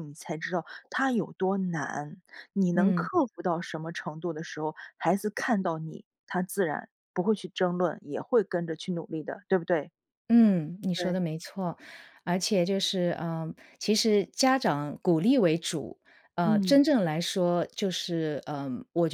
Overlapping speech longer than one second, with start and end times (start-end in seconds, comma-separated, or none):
none